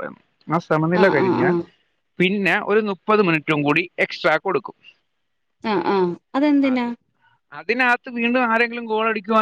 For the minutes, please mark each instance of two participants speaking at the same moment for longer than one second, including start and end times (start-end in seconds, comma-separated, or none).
none